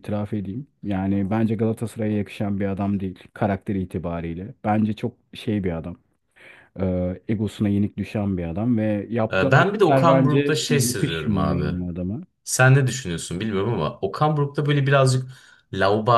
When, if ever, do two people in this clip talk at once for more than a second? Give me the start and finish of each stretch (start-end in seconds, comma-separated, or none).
9.3-11.6